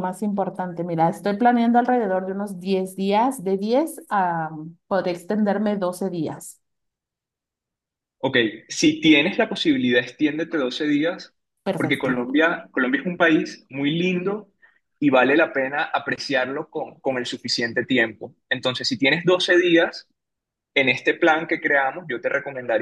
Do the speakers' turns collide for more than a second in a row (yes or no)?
no